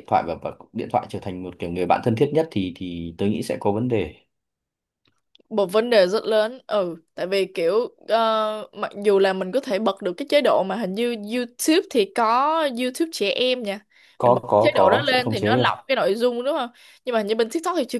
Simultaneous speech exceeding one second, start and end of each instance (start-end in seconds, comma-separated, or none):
14.2-15.7